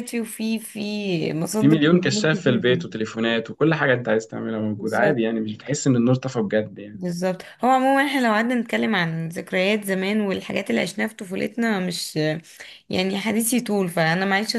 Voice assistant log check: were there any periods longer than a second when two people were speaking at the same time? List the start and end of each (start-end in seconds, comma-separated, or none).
1.6-2.9